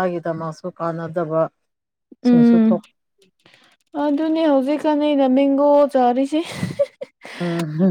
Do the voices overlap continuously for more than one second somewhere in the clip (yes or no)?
no